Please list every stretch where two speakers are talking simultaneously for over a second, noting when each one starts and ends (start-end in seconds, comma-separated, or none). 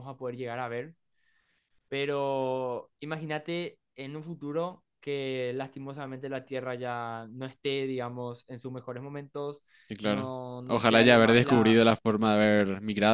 10.0-11.8